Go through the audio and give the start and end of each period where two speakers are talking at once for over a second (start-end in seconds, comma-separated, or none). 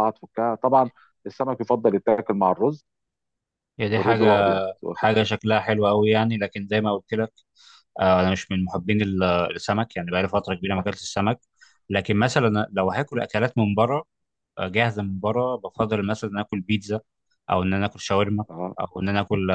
none